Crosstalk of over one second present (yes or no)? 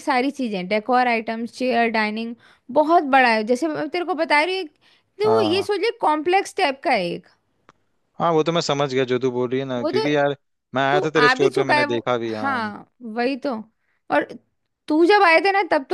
yes